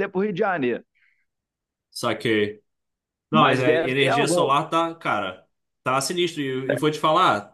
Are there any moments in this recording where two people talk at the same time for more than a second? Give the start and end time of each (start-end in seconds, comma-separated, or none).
3.3-4.5